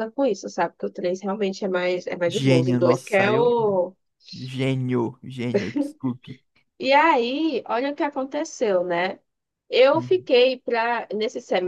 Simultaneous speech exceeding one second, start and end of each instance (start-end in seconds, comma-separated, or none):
2.3-3.5